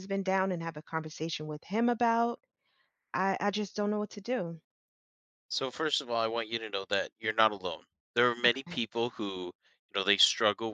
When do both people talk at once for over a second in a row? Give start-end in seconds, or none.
none